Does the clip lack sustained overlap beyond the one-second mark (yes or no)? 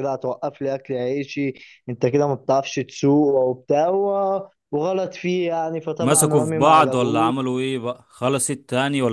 no